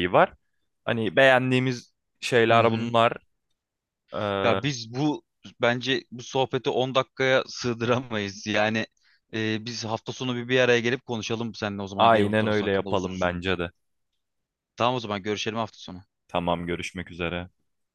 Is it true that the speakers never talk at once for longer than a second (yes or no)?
no